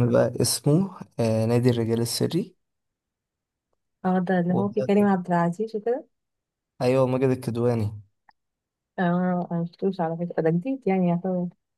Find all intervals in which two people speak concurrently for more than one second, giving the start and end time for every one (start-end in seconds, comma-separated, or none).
none